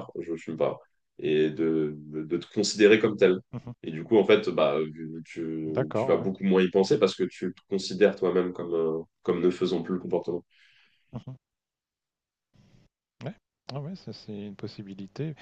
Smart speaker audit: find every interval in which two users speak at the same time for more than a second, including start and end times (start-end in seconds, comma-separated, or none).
none